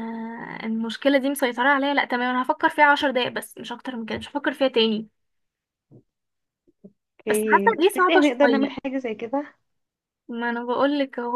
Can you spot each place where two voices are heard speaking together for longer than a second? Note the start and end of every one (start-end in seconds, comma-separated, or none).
7.3-8.7